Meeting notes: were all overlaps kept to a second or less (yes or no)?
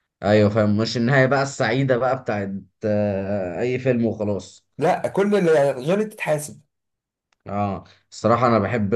yes